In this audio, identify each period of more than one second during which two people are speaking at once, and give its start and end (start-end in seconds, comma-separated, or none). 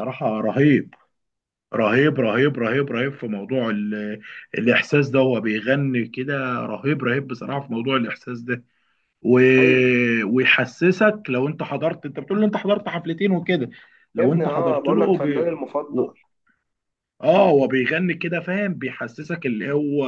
14.2-15.5